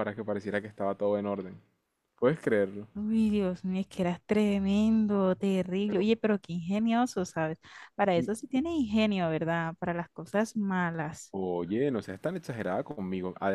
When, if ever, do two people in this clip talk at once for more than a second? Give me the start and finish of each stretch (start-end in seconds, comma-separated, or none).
none